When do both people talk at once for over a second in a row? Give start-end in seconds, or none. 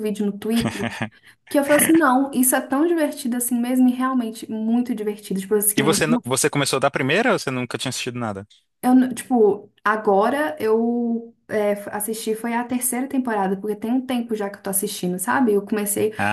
none